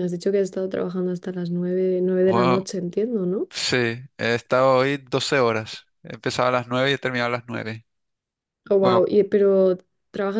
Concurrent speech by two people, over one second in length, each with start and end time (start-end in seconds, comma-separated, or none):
none